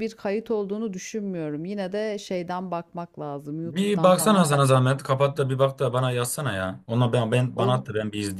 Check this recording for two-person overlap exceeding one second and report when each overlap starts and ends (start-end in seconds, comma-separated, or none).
3.6-5.0